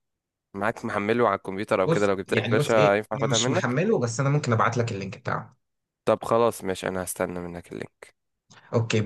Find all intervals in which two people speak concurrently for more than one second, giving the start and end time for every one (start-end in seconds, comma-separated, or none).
1.9-3.8